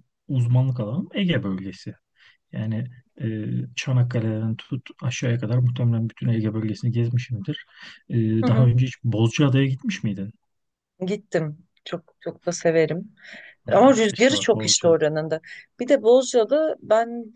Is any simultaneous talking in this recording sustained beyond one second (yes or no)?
yes